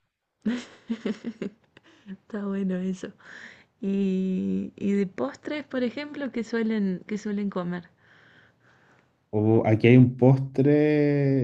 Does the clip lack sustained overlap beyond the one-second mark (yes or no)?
yes